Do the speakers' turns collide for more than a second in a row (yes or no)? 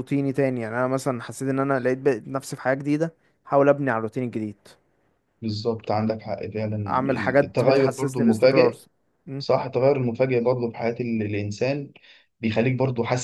yes